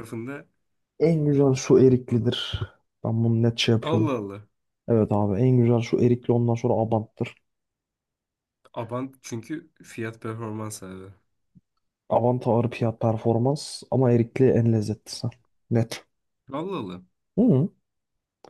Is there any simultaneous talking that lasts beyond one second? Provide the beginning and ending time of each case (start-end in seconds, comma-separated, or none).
none